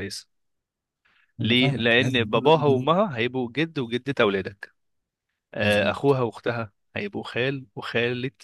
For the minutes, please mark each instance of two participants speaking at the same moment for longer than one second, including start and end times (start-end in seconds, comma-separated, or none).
1.4-2.9